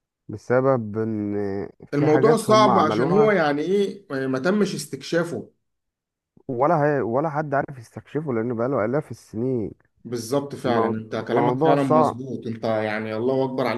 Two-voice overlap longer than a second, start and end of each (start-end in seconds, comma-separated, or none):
1.9-3.4, 10.7-12.2